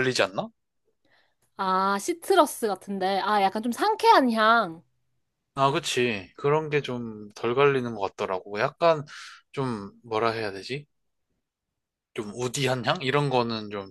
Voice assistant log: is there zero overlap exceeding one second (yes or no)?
yes